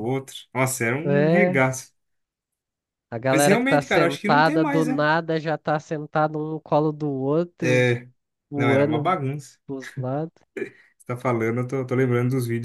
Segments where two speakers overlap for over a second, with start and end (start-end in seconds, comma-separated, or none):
3.3-5.1